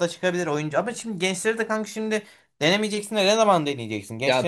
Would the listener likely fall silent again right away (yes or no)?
no